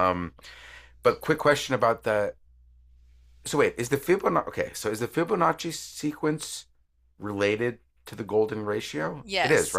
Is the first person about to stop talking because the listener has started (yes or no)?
yes